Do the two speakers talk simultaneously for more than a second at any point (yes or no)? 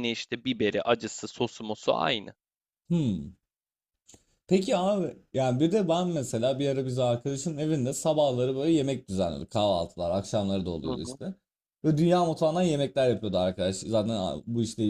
no